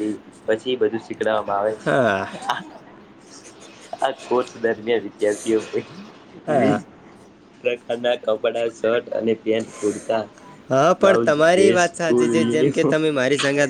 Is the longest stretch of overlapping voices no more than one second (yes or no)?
no